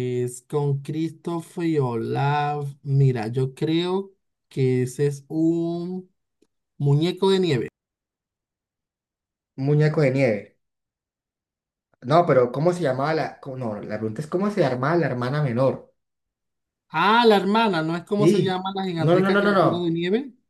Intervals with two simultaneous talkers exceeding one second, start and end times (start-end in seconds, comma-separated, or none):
18.2-20.0